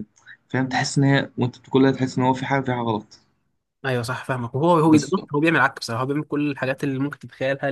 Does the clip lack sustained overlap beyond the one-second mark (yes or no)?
yes